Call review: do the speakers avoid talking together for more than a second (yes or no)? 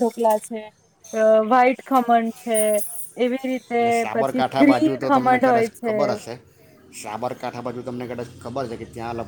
no